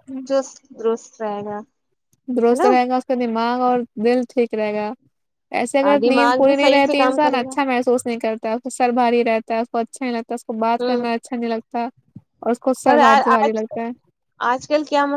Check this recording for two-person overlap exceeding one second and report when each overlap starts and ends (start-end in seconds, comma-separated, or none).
6.0-7.5